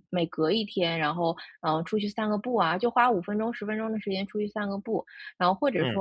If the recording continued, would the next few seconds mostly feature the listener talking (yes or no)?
no